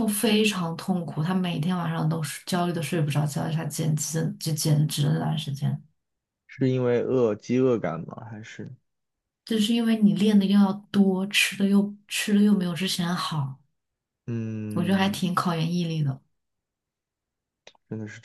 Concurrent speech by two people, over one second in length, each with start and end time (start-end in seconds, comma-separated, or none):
none